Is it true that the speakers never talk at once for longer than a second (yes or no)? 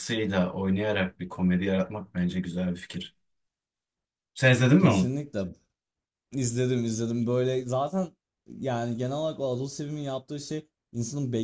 yes